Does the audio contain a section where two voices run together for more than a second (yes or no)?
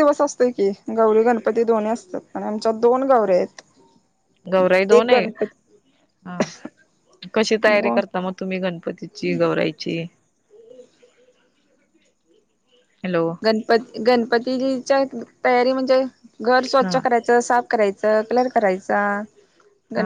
no